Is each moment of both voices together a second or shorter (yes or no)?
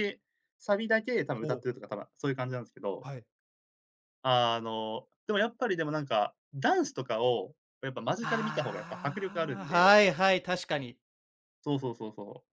no